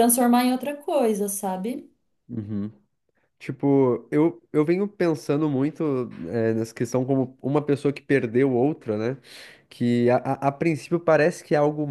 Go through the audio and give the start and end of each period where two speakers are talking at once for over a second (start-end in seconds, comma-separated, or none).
none